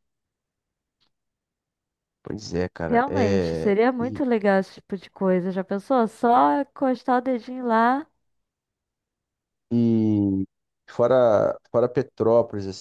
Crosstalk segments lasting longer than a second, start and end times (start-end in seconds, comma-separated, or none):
2.9-4.2